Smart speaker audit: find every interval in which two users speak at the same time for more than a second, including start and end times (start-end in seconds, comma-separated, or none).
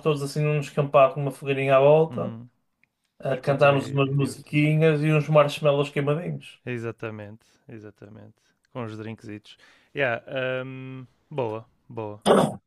3.3-4.6